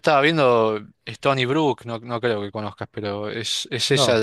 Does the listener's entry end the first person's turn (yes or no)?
no